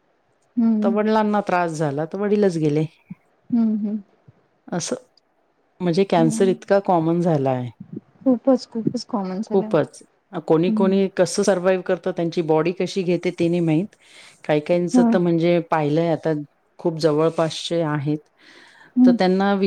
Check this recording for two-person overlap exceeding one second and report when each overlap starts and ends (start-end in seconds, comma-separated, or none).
none